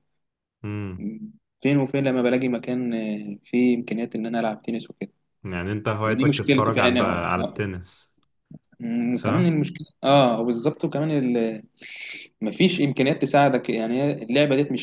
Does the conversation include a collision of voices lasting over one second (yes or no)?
yes